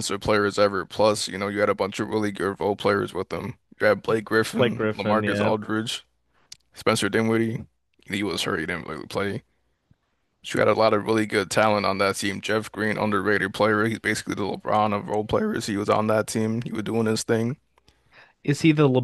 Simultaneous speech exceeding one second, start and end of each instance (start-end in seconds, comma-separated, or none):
4.2-5.5